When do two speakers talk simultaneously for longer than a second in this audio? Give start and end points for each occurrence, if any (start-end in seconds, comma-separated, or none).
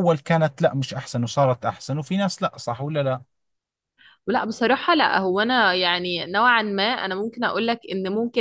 none